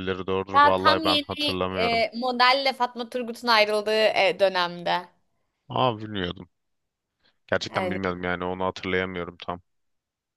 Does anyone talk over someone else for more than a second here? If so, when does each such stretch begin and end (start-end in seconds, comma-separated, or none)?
0.5-2.0